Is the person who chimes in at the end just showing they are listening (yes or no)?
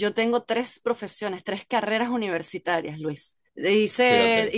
yes